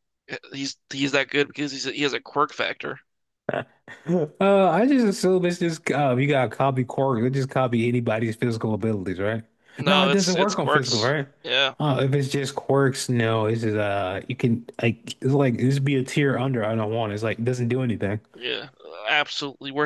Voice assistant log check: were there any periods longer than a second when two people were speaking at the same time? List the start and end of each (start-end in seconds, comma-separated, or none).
9.9-11.3